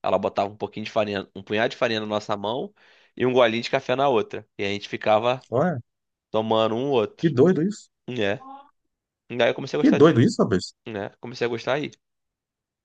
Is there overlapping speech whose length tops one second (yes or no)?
no